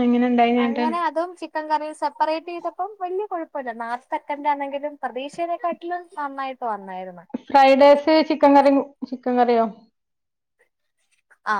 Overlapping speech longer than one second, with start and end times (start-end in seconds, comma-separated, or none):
none